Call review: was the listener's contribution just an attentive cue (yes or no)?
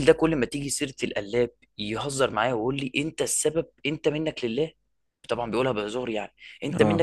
yes